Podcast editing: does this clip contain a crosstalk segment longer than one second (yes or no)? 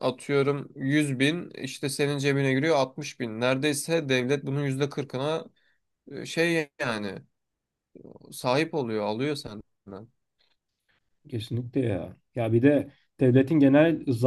no